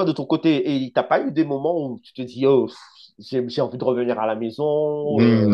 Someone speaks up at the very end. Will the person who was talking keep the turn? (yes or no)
no